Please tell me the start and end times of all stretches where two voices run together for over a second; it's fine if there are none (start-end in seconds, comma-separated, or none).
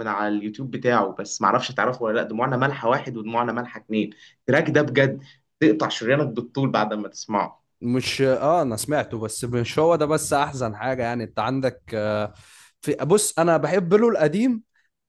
none